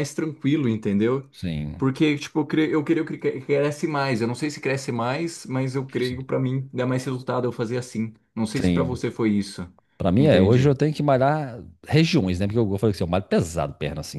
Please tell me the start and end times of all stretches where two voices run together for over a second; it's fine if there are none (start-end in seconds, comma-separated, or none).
none